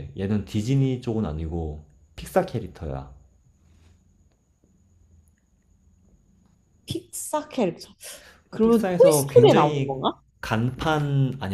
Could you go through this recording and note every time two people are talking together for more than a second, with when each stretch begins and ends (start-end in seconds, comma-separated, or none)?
8.6-10.0